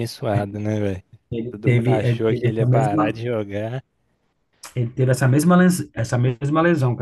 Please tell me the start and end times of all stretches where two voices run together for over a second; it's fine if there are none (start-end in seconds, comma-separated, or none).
1.6-3.2